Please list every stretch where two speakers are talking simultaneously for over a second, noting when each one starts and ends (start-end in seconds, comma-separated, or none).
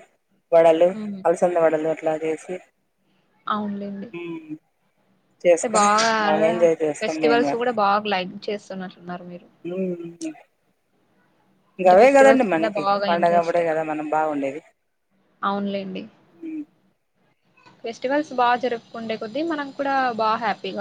11.8-13.6